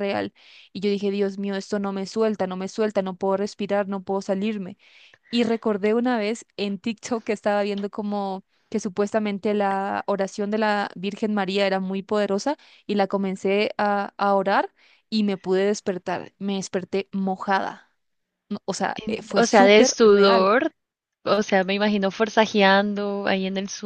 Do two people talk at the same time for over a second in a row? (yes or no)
yes